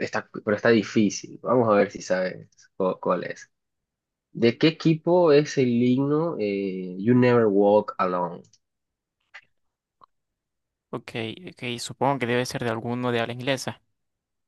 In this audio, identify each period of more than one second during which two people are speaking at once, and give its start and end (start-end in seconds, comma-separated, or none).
none